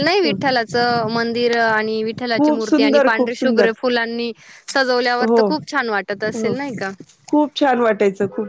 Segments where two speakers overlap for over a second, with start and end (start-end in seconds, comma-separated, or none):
2.4-3.7